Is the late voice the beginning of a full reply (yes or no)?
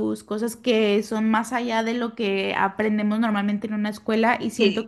no